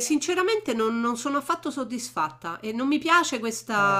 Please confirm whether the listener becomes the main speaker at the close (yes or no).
no